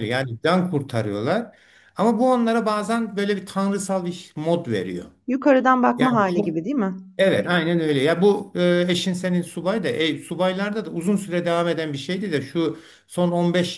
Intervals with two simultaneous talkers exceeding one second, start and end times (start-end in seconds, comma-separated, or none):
none